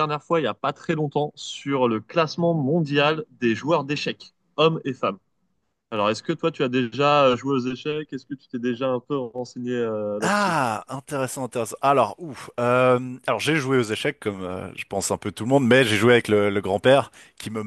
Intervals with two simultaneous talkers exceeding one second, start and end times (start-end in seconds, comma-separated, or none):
none